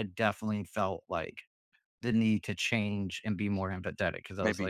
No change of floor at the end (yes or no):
no